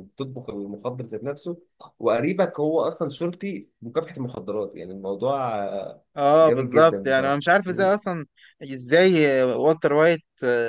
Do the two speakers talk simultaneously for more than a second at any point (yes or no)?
yes